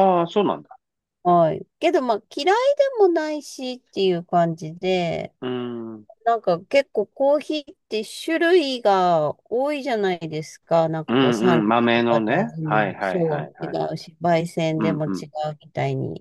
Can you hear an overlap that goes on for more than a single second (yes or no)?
yes